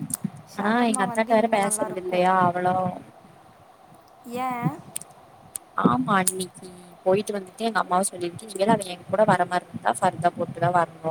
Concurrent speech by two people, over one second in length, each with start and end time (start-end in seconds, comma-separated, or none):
0.6-2.2